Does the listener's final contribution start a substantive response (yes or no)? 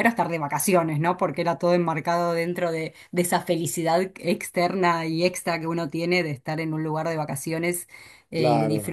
no